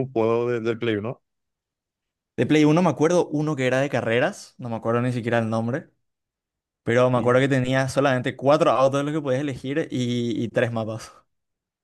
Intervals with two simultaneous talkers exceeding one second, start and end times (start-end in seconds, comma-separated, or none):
none